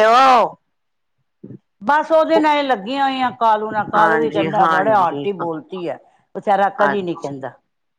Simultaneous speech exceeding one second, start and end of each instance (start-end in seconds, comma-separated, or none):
4.0-5.3